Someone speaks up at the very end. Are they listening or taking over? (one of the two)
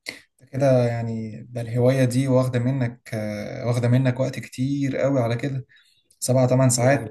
listening